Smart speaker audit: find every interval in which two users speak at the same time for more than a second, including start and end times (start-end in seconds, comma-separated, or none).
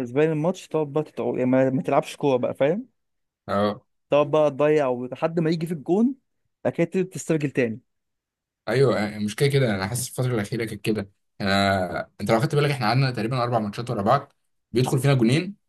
none